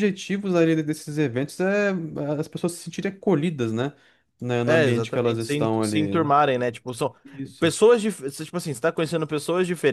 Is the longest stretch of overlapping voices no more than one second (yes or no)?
no